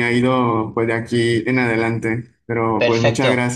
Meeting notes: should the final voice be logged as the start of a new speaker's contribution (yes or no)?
yes